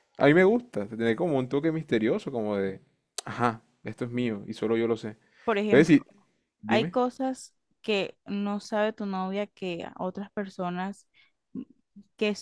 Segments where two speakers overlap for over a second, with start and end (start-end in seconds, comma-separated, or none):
none